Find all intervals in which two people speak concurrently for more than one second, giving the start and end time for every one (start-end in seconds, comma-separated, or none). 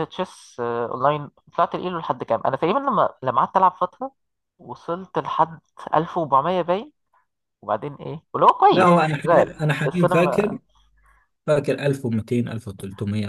8.7-10.6